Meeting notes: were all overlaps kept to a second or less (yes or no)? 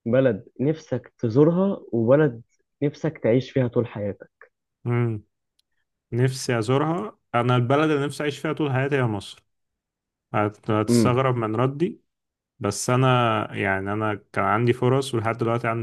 yes